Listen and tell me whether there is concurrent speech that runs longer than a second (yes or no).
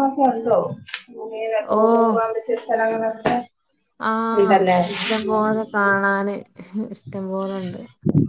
no